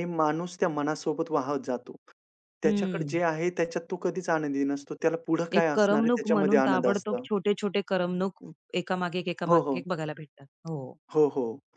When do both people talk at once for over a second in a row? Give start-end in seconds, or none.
5.6-7.2